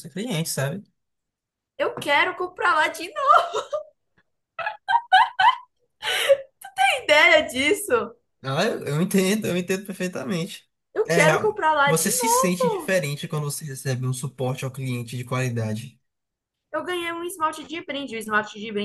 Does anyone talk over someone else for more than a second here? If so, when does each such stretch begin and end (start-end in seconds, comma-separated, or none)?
11.1-12.9